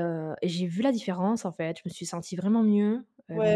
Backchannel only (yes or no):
no